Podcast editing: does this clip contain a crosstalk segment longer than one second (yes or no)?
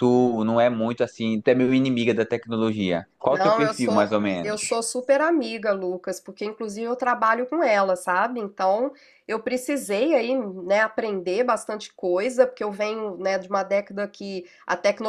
yes